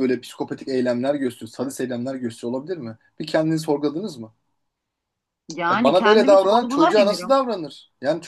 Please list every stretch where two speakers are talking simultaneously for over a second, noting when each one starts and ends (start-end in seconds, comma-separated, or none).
5.7-7.4